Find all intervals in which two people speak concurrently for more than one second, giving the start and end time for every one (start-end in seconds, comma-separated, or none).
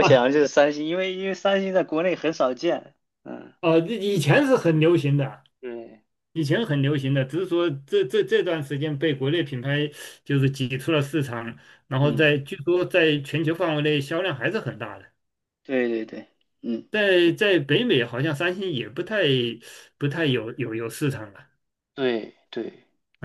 none